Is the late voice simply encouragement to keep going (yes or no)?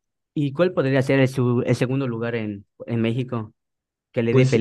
no